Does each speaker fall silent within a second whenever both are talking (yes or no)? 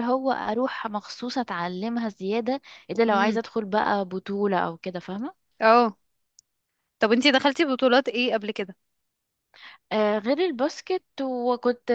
yes